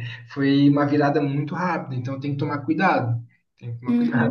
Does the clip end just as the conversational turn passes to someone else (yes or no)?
yes